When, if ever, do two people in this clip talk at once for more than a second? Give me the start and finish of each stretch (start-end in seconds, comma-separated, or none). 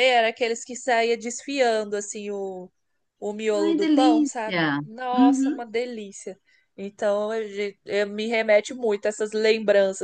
3.6-5.6